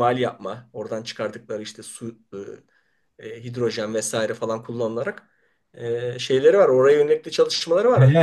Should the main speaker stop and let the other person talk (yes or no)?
yes